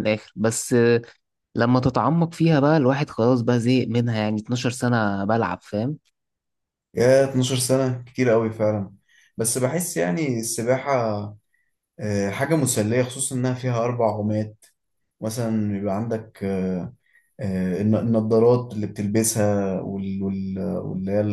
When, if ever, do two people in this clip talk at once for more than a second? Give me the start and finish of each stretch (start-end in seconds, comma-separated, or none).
none